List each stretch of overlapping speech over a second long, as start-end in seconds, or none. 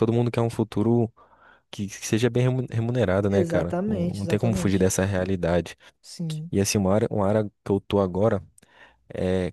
3.3-4.9